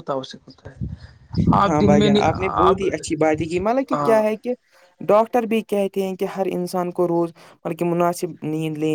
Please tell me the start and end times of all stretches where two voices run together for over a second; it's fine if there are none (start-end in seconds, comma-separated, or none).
none